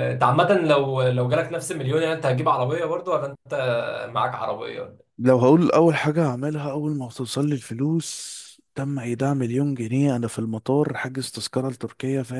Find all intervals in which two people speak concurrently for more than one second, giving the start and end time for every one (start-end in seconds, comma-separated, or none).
none